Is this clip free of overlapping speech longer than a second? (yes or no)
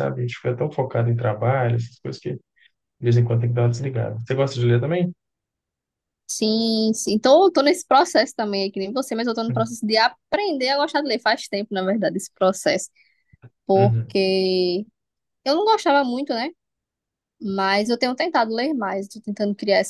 yes